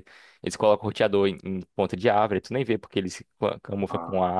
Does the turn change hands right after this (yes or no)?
no